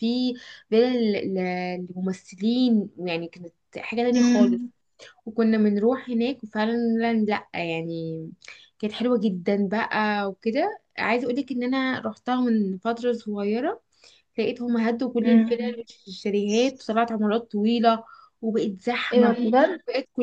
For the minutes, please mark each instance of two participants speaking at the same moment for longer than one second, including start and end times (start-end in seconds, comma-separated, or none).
none